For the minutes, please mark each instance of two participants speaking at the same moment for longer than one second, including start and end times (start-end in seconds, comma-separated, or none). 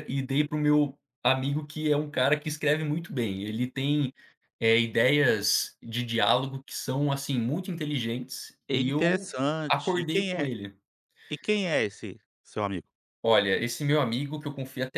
8.7-10.5